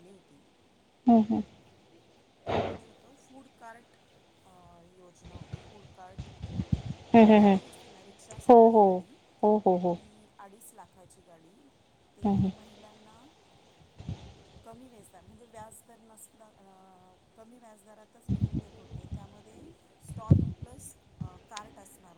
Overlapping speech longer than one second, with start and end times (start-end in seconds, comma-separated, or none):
none